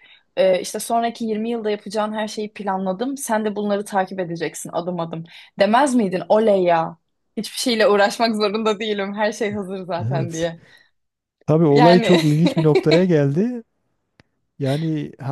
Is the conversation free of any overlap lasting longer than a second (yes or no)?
yes